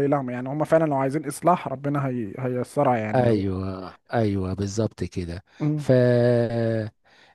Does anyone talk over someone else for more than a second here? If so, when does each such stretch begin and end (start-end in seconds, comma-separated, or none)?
none